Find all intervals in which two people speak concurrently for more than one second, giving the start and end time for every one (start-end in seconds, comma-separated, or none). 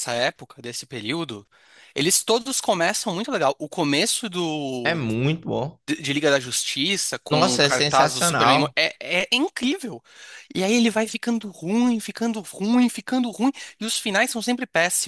7.3-8.8